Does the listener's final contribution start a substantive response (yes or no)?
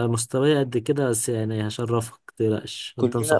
yes